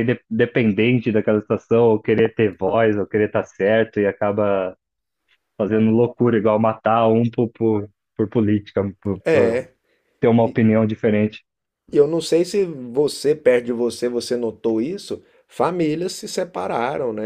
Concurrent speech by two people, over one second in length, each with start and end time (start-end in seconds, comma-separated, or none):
none